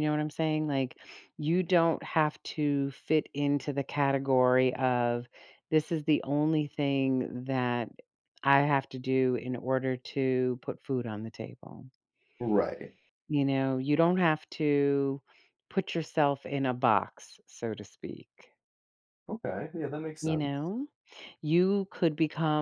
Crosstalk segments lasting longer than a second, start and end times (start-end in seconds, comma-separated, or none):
none